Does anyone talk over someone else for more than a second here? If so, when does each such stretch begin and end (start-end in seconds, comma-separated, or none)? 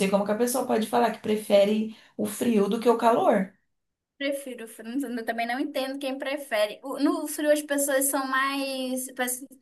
none